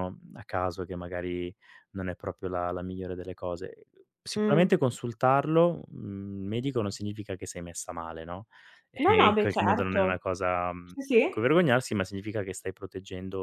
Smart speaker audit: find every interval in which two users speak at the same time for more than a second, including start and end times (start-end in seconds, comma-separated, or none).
9.0-10.2